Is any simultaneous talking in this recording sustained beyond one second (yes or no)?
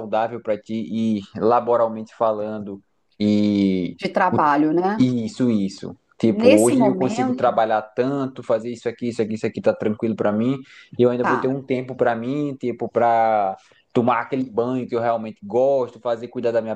yes